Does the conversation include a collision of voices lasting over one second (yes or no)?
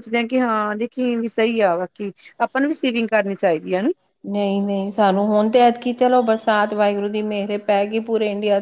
no